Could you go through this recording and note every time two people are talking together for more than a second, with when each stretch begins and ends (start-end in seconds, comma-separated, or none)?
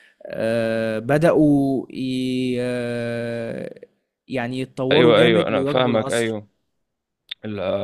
4.9-6.3